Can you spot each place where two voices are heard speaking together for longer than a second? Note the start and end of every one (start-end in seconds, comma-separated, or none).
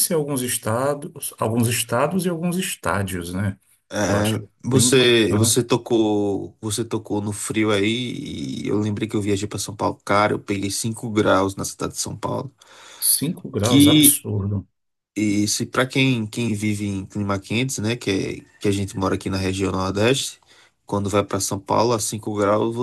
4.1-5.6